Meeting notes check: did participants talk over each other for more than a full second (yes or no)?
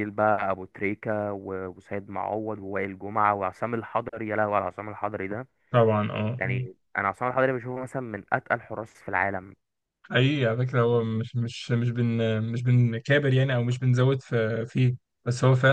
no